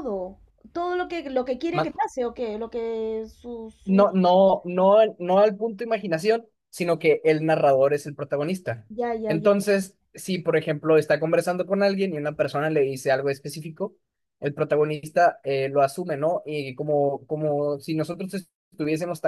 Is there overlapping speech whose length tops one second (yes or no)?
no